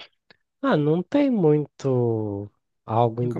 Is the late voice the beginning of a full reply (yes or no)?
no